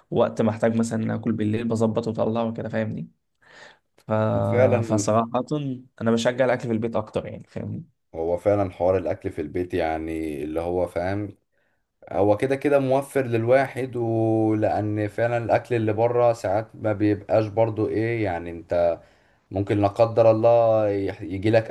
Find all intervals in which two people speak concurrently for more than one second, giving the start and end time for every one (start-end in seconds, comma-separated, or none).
none